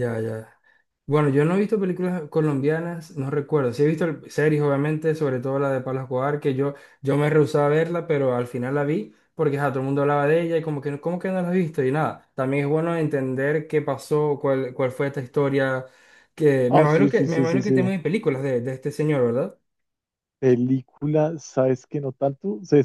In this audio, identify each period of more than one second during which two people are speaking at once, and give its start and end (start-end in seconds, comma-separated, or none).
16.7-17.9